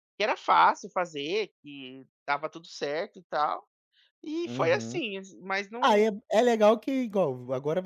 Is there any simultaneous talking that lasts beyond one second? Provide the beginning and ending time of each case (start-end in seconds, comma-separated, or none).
none